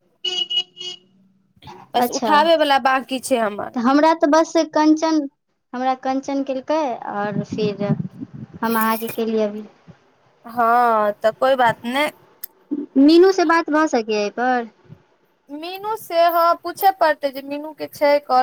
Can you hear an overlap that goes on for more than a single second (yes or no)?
no